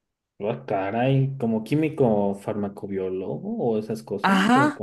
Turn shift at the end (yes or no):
yes